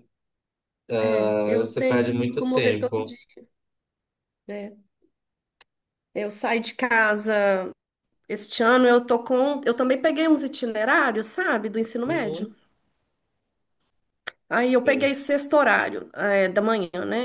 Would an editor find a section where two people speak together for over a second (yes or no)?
yes